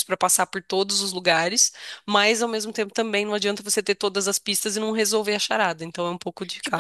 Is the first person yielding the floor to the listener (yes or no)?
yes